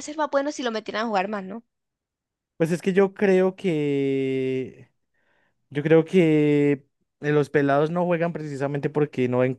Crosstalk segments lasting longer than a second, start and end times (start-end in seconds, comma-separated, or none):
none